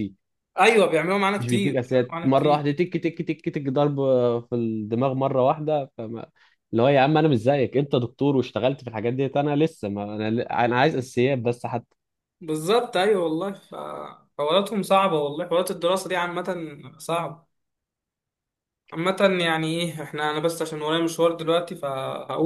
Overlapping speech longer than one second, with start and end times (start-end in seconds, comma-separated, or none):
1.4-2.7